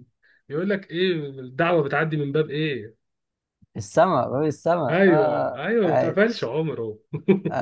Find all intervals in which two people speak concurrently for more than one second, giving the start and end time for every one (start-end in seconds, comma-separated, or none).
4.9-6.5